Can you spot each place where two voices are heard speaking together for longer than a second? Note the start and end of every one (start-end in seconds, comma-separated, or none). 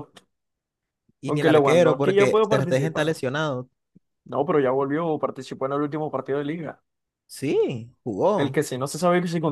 1.3-3.2